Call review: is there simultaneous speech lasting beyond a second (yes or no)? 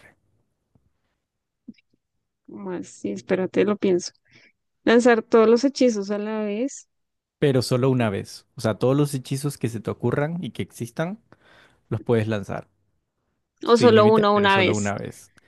yes